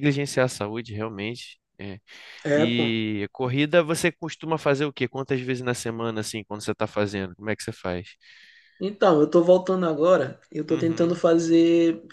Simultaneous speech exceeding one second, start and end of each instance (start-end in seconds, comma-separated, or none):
none